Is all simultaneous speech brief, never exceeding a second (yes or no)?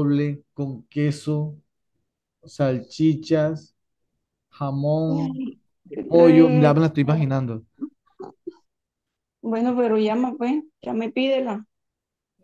no